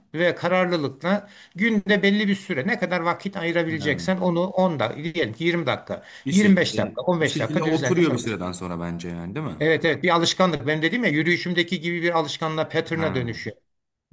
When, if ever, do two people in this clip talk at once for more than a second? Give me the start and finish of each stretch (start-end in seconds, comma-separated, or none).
6.2-8.4